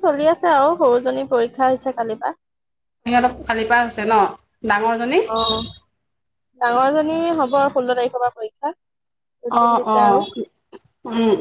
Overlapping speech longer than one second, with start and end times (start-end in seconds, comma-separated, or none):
none